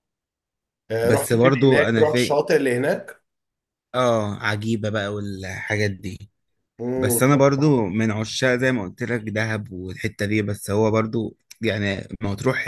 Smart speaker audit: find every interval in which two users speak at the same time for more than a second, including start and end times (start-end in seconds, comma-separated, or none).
1.0-2.4